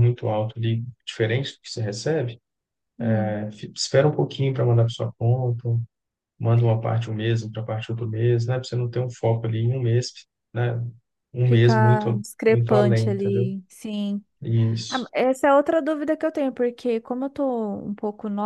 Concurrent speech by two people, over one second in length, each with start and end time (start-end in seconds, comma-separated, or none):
11.4-13.5